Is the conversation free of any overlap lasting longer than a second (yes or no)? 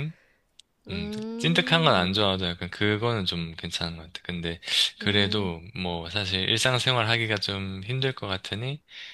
no